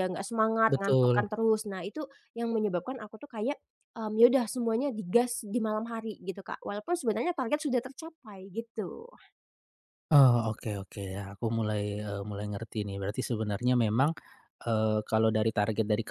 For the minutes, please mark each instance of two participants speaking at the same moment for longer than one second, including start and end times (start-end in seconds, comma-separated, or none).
none